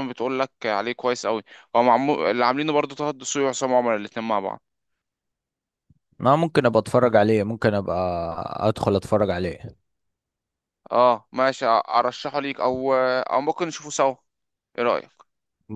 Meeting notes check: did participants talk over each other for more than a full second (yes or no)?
no